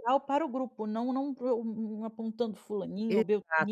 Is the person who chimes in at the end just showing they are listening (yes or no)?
no